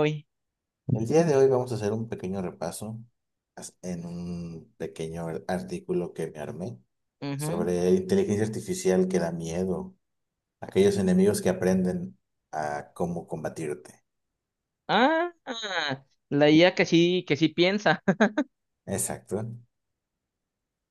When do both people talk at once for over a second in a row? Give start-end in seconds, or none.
none